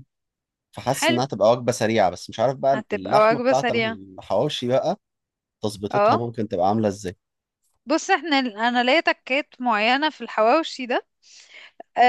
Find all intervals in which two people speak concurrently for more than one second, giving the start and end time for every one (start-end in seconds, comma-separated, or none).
2.7-4.0